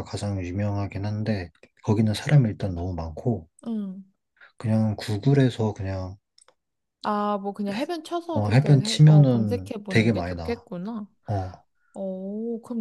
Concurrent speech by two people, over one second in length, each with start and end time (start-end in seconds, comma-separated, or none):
8.3-10.6